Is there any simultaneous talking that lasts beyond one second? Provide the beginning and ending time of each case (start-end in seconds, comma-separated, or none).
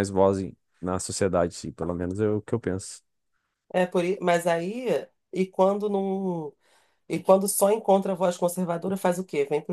none